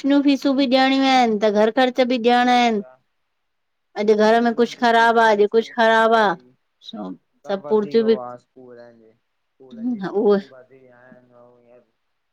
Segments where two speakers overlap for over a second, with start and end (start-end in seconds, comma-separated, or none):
4.2-6.2